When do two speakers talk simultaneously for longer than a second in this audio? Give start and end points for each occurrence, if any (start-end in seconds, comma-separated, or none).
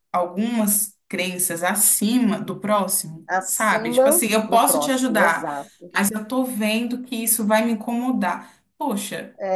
3.3-5.5